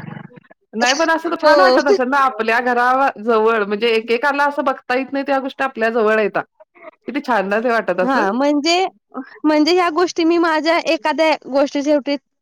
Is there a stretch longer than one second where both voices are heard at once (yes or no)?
no